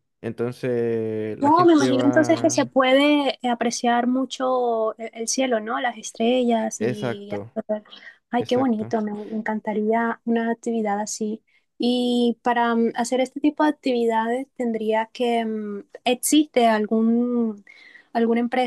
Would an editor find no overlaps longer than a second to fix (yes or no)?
no